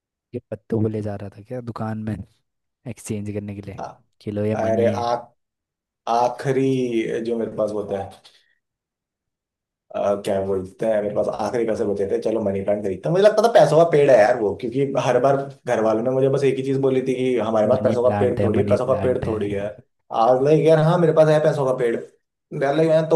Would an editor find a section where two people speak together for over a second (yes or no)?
yes